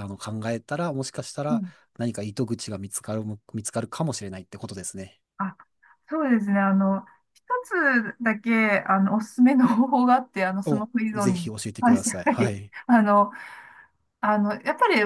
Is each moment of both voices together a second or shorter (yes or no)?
no